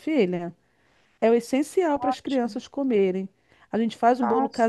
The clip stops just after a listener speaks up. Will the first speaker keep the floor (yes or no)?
yes